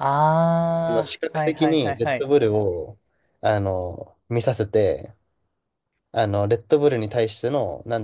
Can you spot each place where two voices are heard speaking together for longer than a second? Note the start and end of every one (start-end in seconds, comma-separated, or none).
0.9-2.3